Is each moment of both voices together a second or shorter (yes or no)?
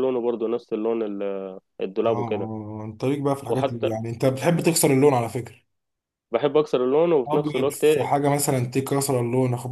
yes